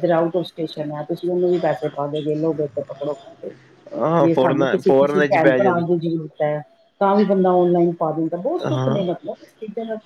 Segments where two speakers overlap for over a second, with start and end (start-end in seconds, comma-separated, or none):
4.2-5.7